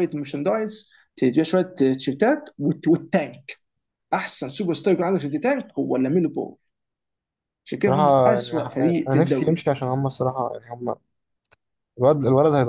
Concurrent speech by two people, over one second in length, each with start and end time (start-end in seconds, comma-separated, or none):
7.8-9.6